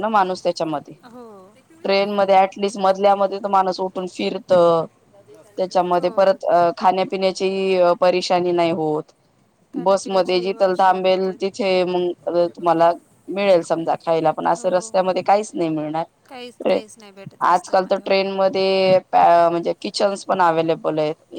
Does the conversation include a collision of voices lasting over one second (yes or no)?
yes